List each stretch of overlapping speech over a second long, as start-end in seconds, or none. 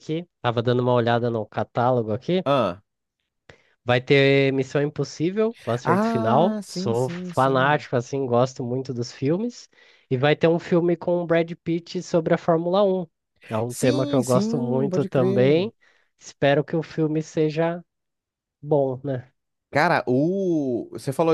5.8-7.8, 13.7-15.7